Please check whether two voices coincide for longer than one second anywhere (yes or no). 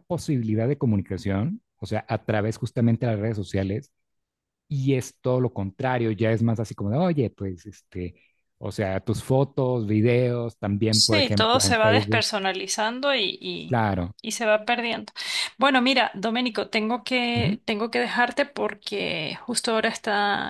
yes